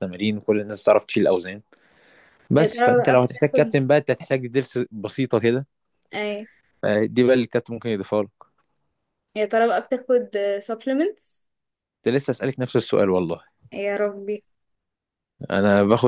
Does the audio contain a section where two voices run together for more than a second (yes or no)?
yes